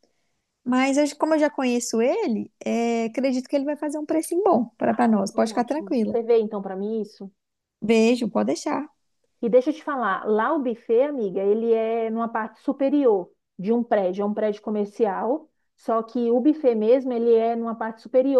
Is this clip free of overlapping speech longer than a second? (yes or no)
no